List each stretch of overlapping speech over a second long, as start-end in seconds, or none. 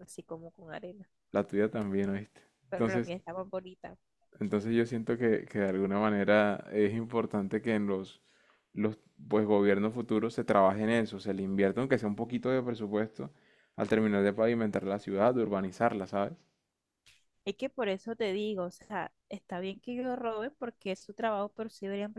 none